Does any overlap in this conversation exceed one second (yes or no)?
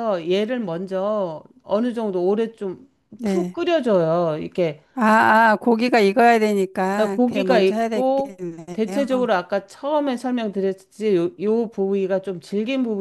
yes